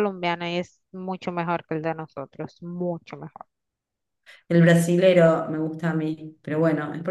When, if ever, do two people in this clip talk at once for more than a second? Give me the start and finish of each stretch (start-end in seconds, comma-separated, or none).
none